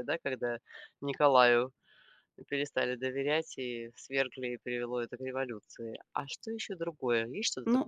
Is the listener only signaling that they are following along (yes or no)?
no